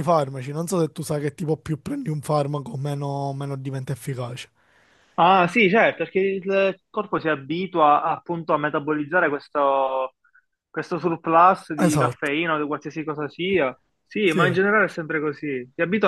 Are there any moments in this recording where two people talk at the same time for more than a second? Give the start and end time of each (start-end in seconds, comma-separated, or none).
none